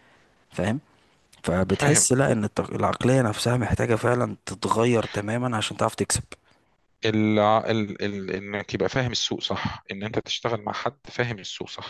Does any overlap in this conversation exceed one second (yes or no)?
no